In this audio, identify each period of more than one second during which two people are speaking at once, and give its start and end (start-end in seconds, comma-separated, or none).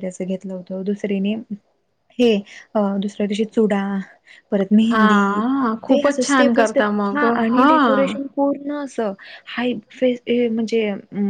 5.9-8.2